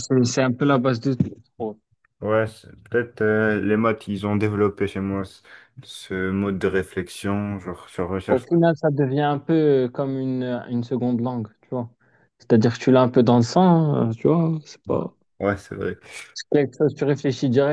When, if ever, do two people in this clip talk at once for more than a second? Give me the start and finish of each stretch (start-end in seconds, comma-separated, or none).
none